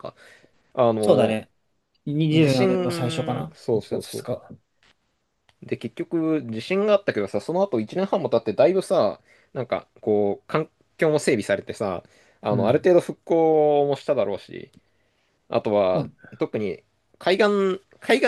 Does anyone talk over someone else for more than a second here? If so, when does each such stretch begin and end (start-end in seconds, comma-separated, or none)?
2.3-4.3